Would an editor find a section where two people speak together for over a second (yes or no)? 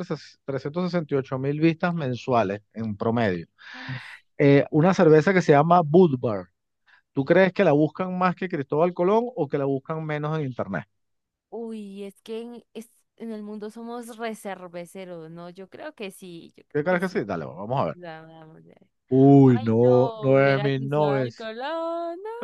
yes